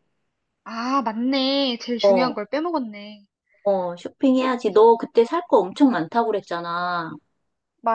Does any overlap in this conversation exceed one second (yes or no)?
no